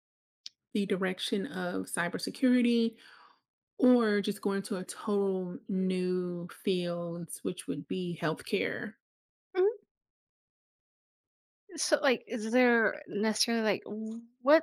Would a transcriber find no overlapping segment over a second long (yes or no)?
yes